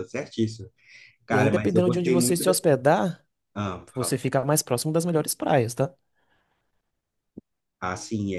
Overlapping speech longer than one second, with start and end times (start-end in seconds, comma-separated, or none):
1.3-2.7